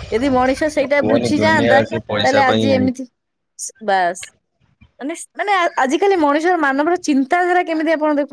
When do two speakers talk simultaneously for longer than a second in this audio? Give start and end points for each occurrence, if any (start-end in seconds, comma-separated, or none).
1.0-2.7